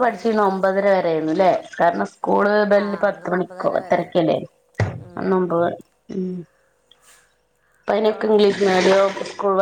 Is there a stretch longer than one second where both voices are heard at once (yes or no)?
yes